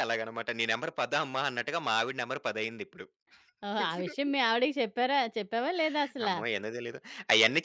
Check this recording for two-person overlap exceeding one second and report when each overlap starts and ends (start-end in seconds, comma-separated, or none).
none